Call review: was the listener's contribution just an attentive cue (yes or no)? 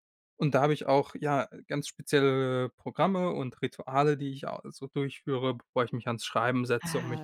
no